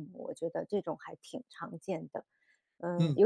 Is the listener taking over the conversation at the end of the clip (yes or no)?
yes